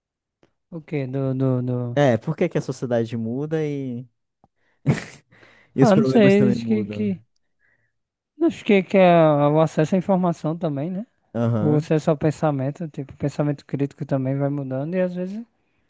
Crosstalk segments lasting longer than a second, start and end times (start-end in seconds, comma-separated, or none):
5.8-7.1